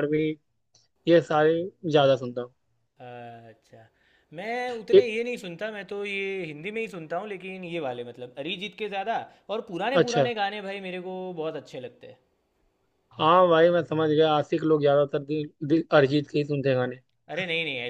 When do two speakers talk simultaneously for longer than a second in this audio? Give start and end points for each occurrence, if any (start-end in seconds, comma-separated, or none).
none